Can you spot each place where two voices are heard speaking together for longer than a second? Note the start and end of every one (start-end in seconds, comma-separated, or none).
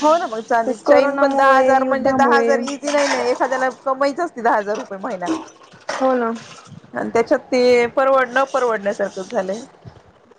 0.7-2.5